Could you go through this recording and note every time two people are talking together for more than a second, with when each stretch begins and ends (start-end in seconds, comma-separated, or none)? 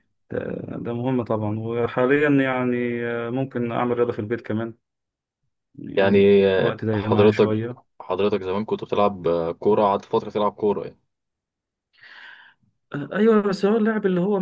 6.0-7.5